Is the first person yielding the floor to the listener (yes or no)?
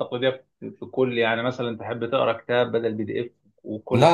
yes